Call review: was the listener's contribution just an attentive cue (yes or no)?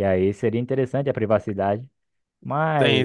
no